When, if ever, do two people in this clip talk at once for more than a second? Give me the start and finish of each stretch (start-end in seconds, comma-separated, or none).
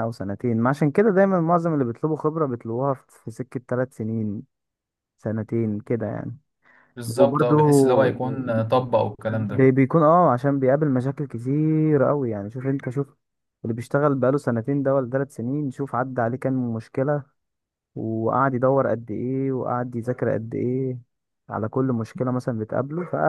none